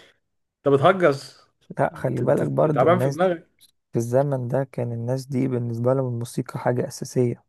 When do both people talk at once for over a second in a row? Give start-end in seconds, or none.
1.9-3.3